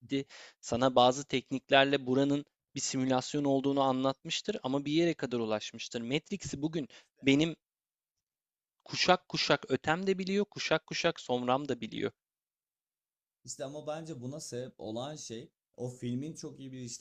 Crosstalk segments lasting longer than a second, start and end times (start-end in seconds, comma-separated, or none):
none